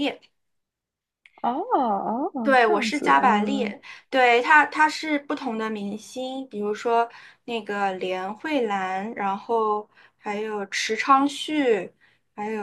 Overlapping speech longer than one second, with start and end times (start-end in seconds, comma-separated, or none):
2.4-3.8